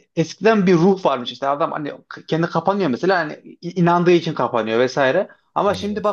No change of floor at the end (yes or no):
yes